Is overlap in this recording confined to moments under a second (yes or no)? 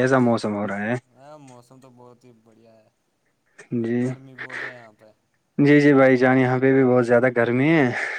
yes